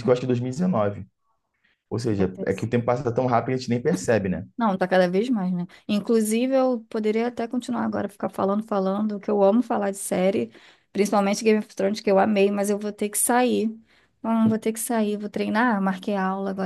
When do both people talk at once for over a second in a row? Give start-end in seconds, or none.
none